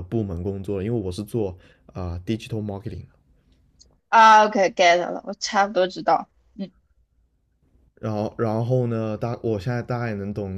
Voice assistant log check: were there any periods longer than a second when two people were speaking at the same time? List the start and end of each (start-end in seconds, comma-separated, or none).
none